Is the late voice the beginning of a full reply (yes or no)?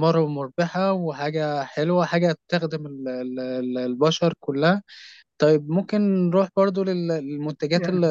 yes